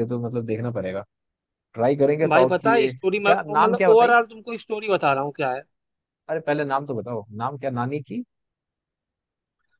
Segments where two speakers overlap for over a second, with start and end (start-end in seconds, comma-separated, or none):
2.3-4.2